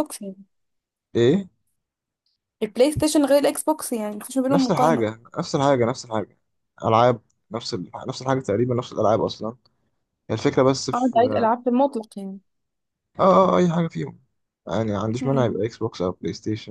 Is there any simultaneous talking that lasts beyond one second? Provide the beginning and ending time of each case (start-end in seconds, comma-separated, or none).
none